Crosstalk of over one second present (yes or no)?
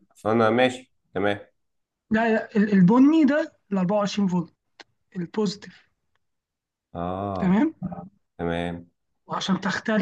no